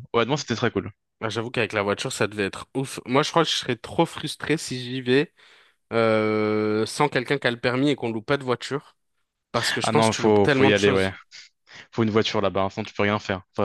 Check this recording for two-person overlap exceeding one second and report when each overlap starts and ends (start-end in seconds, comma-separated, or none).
9.8-11.1